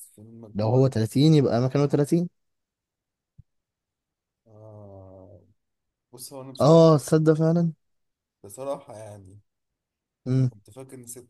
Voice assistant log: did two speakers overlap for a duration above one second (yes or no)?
no